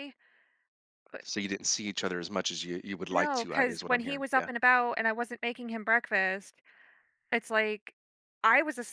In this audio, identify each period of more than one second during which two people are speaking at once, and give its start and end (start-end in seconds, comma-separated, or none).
3.1-4.5